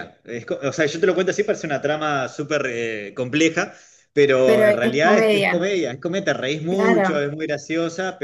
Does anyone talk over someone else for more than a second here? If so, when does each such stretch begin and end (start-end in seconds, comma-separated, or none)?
4.4-5.7